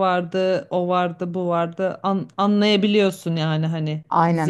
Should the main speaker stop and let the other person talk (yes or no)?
no